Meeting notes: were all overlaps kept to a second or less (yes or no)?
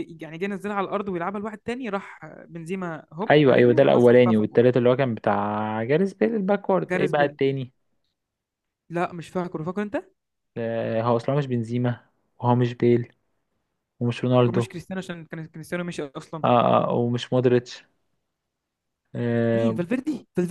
no